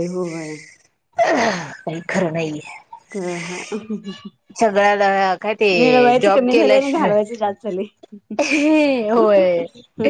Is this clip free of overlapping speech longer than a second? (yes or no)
no